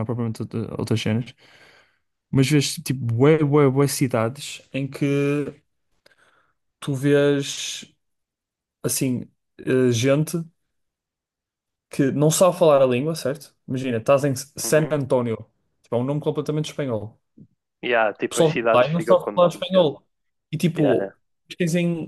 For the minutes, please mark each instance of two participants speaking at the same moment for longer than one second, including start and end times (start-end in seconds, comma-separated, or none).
18.2-19.9